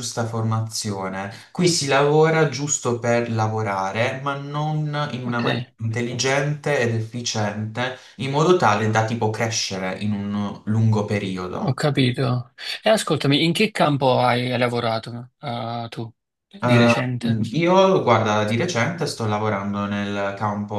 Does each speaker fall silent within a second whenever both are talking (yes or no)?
yes